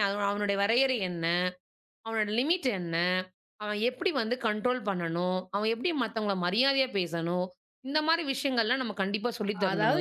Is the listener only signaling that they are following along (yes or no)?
no